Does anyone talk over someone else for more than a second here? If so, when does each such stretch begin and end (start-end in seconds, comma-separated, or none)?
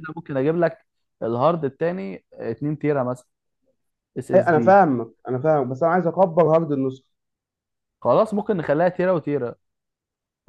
none